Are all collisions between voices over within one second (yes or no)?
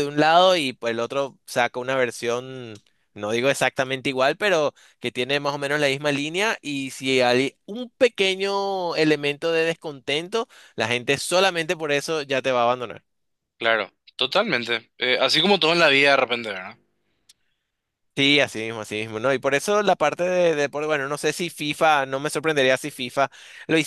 yes